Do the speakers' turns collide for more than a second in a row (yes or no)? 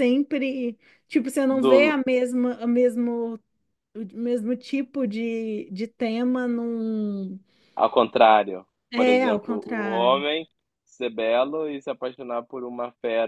yes